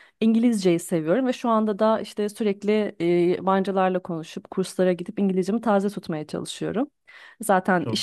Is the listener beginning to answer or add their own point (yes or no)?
no